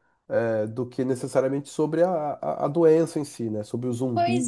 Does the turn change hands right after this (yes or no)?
yes